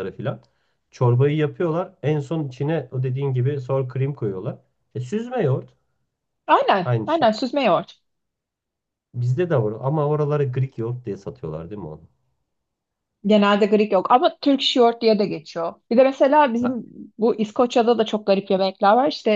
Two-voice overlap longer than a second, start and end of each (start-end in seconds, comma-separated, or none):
none